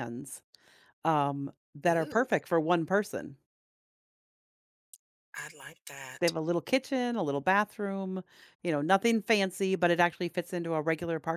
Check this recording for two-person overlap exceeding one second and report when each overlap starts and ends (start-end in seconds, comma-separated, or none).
none